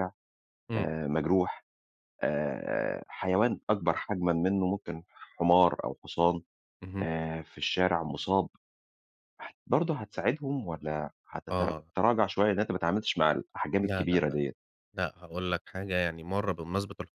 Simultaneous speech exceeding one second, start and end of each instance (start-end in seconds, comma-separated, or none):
none